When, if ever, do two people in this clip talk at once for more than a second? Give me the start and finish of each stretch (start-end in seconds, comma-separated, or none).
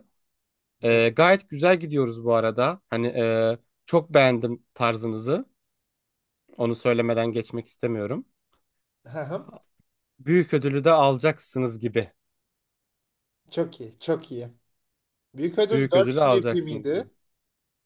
15.7-17.1